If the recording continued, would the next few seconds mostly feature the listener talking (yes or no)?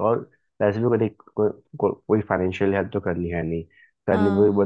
no